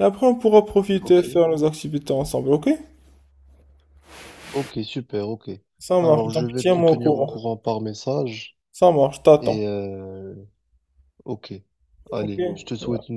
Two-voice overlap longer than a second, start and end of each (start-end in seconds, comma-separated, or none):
6.0-7.3